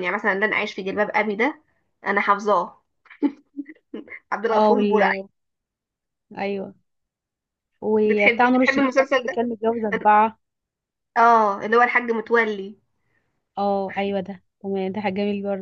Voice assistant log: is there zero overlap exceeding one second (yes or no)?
no